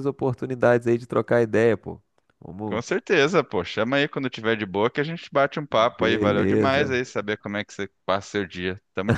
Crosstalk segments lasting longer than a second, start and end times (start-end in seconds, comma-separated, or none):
5.7-6.9